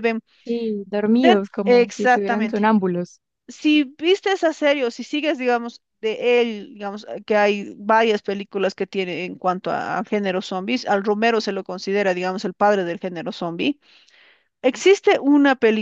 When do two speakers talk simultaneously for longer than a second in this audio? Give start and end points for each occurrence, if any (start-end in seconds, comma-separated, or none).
1.2-2.6